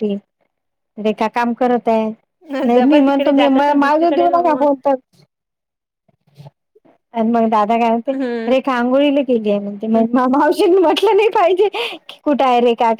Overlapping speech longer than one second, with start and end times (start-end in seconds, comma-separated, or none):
2.7-4.7